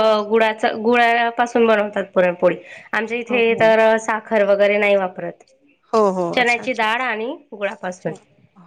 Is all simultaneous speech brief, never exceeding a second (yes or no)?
no